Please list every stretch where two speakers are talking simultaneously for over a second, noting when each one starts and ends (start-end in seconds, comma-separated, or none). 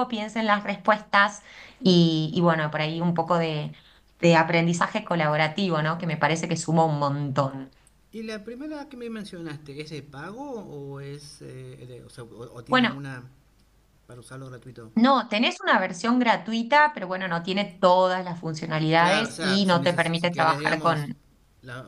19.0-21.1